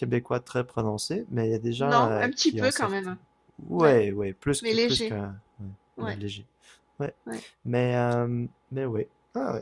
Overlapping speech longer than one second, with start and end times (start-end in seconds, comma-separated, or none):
1.8-3.1